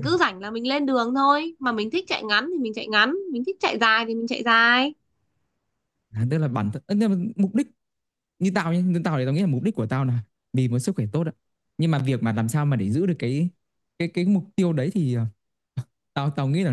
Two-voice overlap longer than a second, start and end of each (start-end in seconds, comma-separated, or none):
none